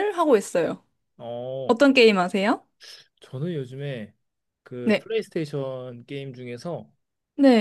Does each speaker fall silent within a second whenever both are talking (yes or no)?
yes